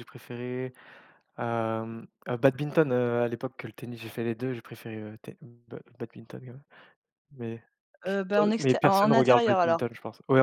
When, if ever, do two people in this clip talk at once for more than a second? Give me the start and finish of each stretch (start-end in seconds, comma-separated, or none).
8.3-9.8